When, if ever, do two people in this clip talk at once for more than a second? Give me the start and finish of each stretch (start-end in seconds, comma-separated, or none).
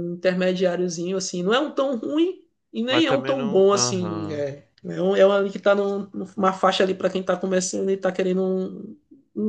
2.9-4.4